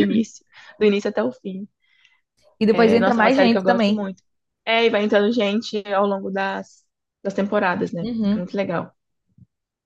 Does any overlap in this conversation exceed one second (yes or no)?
yes